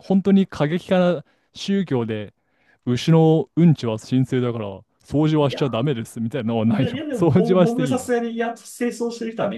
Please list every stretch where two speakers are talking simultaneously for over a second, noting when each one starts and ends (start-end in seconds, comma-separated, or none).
6.8-8.1